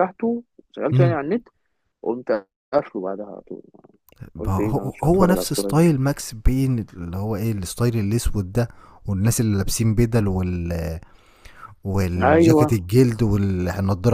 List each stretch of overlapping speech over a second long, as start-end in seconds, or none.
4.4-5.8